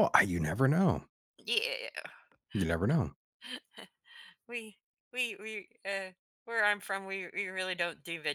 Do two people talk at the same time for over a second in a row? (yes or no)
no